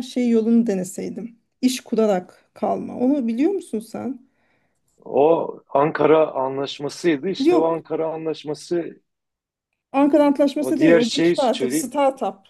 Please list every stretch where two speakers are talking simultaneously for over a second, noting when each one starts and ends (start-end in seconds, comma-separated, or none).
10.6-11.9